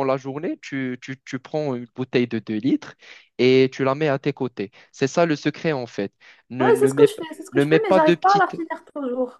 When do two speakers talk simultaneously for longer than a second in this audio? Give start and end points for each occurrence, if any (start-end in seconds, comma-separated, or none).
6.6-8.6